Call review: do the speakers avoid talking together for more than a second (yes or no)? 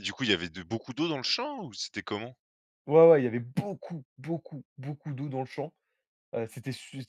yes